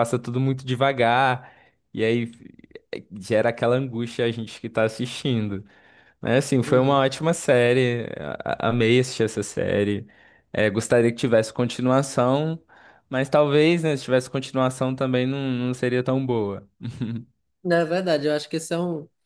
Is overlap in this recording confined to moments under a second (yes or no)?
yes